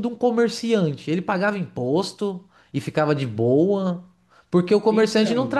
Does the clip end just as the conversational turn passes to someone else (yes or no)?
no